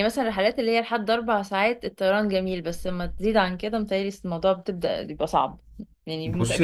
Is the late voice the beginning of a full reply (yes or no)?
yes